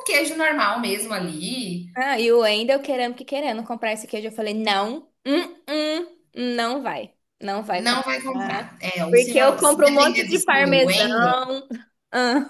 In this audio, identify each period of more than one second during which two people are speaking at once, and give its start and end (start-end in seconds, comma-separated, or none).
7.8-11.4